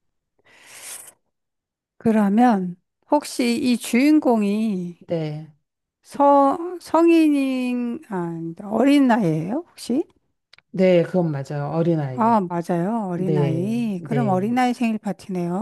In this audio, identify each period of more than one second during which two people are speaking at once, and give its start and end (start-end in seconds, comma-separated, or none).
13.1-14.5